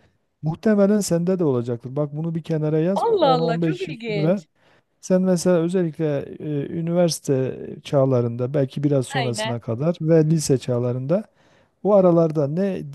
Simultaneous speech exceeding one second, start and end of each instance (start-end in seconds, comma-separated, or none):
3.0-4.4